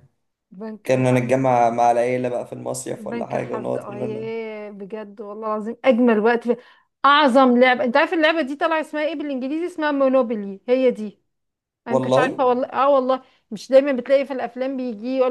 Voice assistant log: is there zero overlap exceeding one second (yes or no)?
no